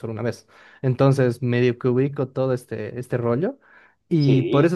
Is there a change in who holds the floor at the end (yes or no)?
no